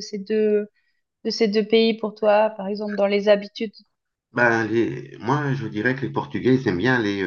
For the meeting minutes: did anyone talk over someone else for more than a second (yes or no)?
no